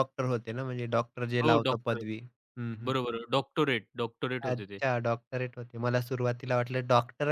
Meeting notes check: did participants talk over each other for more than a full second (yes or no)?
no